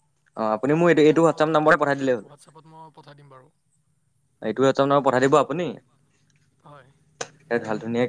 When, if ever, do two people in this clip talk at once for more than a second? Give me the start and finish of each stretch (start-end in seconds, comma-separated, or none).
0.6-2.3